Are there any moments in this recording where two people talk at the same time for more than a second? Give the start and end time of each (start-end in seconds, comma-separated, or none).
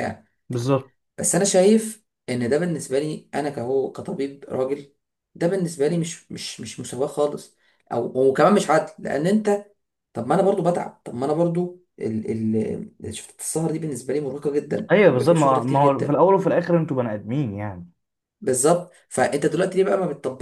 14.9-16.2